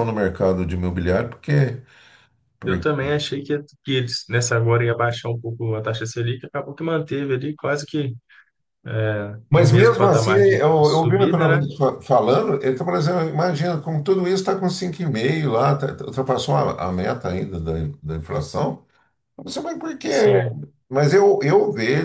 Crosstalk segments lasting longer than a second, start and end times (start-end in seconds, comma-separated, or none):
9.5-11.7